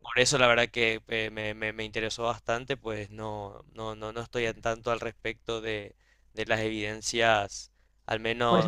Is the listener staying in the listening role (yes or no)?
yes